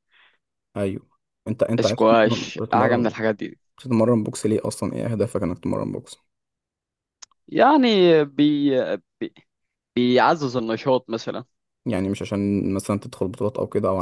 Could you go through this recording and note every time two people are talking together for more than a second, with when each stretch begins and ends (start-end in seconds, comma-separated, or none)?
1.8-3.1